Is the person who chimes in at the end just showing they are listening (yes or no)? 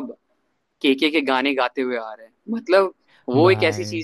yes